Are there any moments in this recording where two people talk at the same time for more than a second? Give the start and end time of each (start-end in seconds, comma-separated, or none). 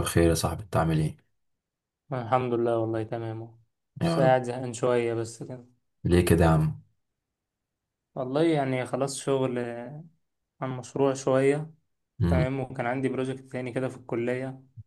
none